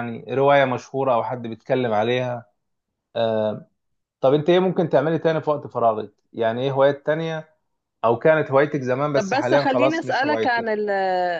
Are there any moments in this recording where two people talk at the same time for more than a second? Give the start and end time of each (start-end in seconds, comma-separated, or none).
9.2-10.7